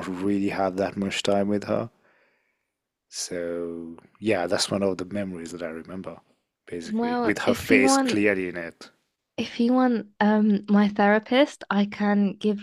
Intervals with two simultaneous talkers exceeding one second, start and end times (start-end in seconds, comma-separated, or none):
6.9-8.2